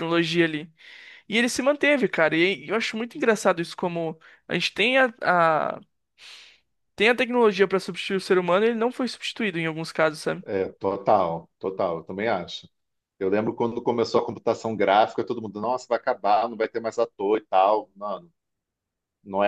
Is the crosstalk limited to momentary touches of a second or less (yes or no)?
yes